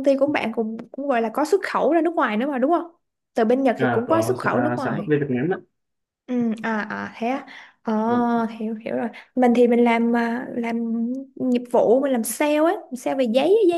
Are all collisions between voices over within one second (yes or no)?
no